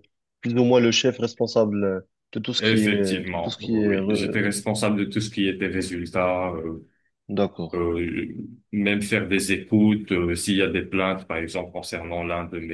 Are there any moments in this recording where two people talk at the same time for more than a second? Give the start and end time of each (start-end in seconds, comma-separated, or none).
2.6-3.9